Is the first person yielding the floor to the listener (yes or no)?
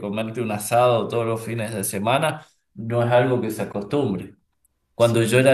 no